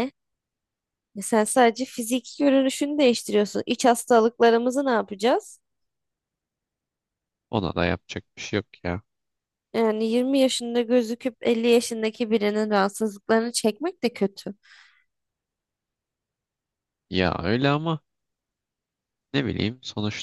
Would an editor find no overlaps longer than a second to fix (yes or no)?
yes